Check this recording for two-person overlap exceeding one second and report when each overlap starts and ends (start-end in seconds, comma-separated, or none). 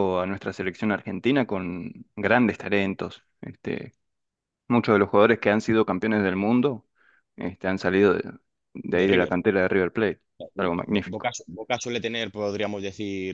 none